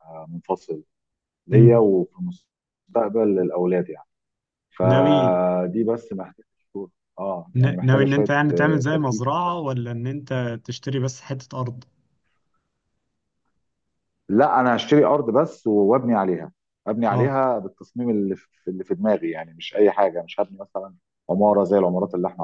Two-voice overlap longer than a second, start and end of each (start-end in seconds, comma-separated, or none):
7.6-9.6